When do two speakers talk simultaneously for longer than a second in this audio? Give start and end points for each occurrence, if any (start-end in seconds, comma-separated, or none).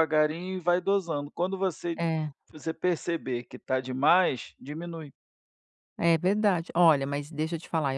none